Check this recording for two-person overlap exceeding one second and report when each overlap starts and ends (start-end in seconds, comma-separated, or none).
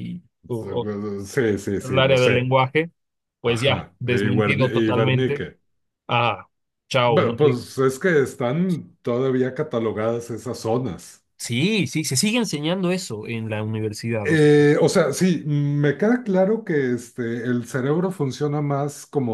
3.4-5.5